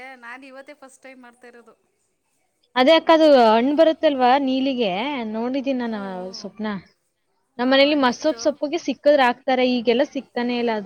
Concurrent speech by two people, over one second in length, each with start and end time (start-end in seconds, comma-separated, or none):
none